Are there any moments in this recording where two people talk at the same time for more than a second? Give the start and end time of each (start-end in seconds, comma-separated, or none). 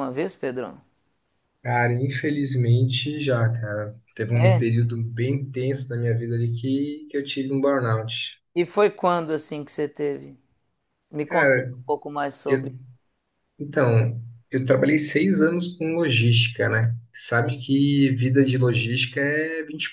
none